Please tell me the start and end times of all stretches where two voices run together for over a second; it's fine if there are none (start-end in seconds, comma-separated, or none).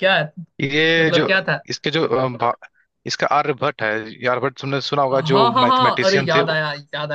5.1-6.6